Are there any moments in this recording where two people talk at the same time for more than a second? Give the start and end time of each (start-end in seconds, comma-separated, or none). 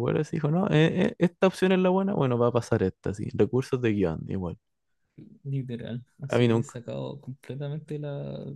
none